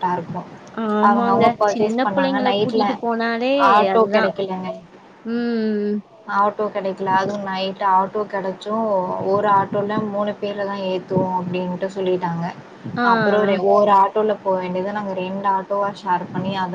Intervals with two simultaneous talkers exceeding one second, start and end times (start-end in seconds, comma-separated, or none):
1.1-2.9